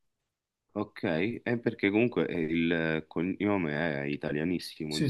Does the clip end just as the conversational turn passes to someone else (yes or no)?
yes